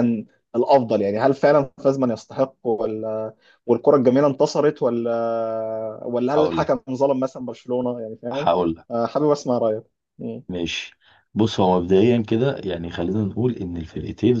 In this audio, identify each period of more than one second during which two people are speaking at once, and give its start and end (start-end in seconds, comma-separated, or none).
none